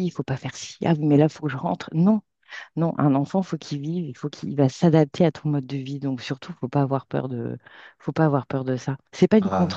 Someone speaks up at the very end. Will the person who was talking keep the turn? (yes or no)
no